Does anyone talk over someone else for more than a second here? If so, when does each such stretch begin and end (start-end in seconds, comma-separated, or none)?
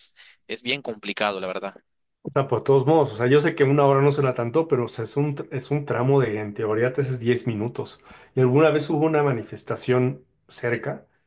none